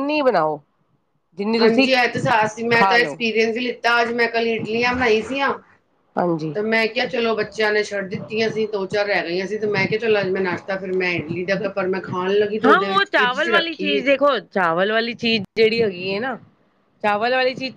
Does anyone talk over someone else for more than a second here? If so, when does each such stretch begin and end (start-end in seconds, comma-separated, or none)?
12.7-14.2